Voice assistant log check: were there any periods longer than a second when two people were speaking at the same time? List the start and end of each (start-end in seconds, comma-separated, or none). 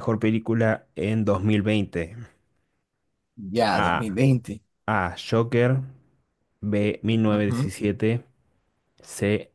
none